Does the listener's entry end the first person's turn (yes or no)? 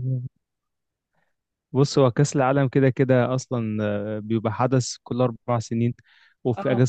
no